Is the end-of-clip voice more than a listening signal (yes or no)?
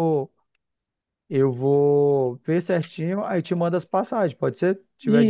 yes